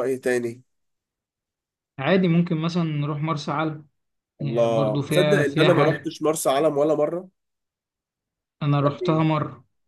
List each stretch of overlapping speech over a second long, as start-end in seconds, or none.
4.4-6.1